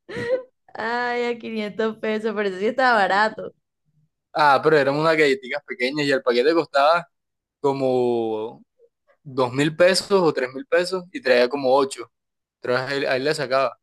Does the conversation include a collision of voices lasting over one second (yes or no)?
no